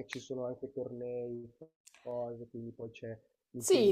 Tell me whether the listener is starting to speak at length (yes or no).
yes